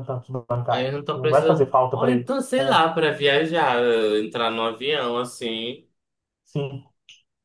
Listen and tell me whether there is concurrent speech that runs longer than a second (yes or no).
yes